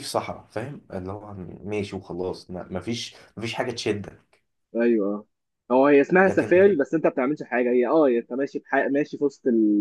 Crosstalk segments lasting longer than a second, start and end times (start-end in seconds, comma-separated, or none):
none